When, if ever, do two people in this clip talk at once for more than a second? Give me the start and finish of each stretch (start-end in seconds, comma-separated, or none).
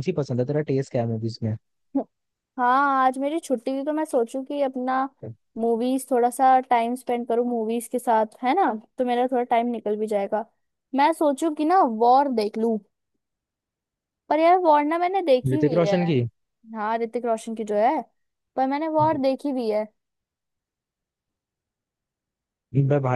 none